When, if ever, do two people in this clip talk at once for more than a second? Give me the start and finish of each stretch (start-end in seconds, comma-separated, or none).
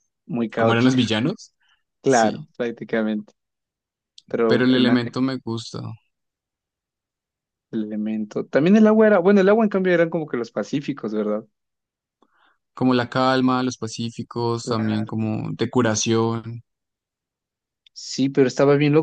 none